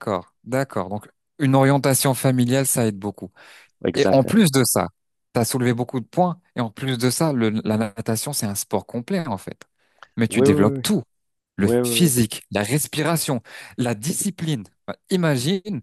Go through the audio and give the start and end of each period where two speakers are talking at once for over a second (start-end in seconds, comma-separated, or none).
none